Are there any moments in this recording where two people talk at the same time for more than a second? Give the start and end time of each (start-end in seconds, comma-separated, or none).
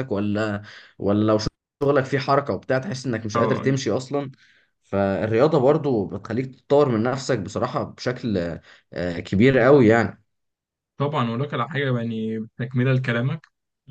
none